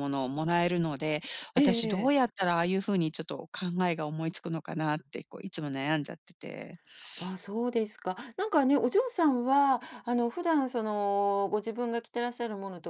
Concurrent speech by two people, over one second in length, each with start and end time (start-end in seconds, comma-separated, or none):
none